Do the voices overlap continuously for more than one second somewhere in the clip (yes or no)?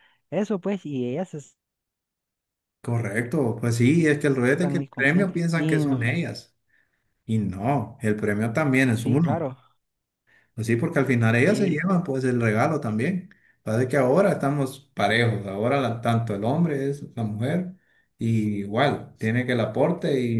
yes